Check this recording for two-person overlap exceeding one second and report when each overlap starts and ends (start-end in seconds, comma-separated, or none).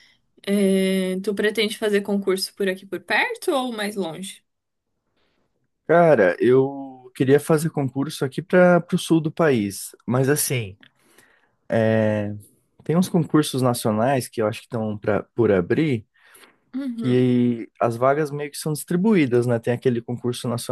none